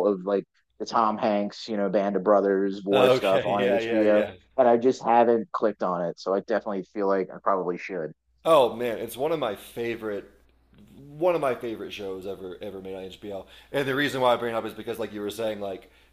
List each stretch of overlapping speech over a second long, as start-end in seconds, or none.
2.9-4.3